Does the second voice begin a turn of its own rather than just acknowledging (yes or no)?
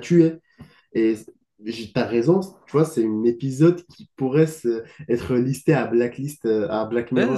yes